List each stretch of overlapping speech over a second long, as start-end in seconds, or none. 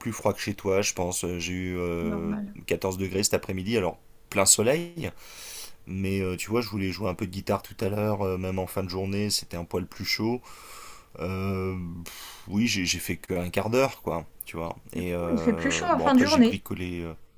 14.9-16.6